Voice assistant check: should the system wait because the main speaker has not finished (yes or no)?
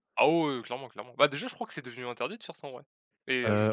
no